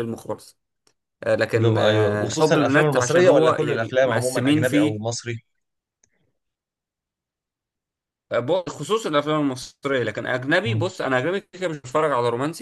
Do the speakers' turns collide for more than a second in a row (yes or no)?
yes